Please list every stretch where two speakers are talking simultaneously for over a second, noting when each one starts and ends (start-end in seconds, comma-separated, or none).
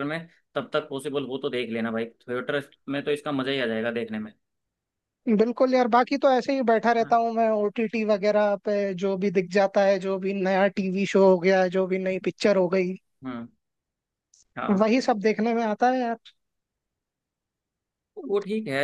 none